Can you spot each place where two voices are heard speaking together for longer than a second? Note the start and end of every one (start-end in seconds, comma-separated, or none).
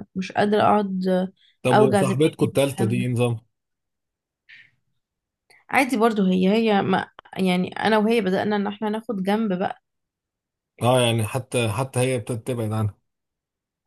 1.7-3.1